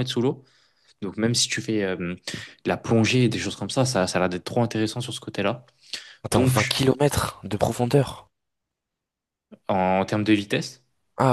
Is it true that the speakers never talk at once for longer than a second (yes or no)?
yes